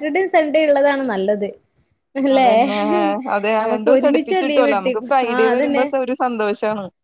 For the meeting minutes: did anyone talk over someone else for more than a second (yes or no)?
yes